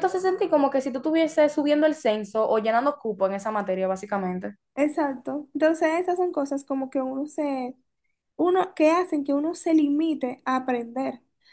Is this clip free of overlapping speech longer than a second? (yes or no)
yes